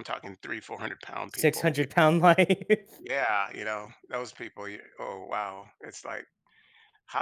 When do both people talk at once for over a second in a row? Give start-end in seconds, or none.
none